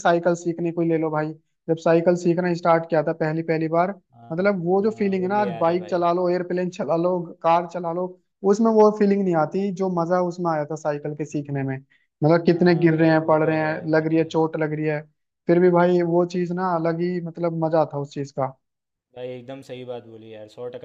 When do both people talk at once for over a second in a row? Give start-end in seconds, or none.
4.3-6.0, 12.5-14.4